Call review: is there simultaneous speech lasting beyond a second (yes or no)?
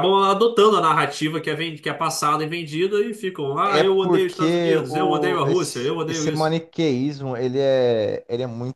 yes